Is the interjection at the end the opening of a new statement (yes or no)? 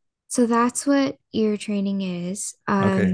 yes